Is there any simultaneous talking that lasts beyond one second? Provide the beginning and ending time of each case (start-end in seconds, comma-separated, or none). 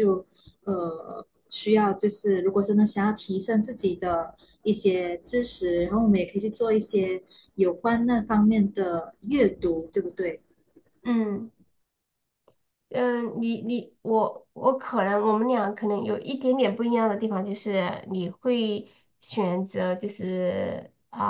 none